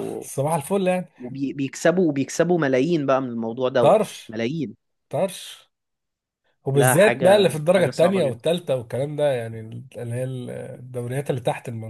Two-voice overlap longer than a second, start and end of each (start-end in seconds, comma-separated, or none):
6.7-8.4